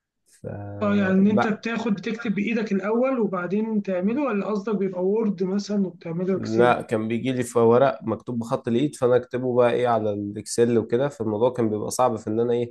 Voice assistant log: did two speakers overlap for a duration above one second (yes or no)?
no